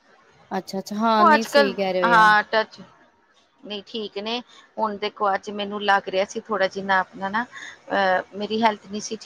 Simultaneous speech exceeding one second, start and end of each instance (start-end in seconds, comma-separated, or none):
none